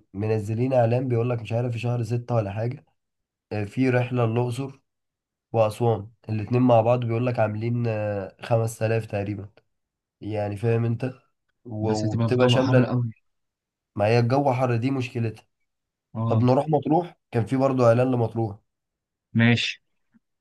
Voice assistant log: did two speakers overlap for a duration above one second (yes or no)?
yes